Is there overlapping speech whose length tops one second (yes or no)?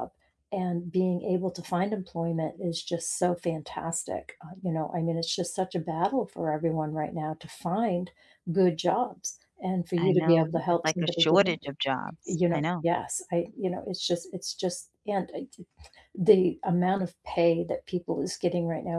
yes